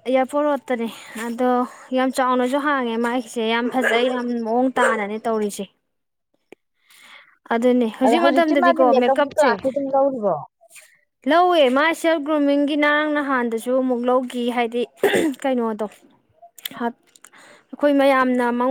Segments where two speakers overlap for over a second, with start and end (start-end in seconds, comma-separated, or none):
8.1-9.5